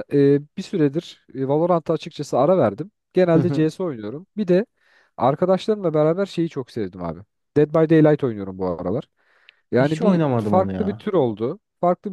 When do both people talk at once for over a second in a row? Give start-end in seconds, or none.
9.8-11.1